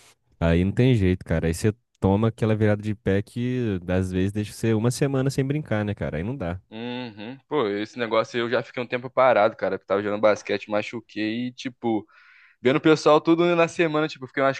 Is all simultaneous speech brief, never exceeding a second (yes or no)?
yes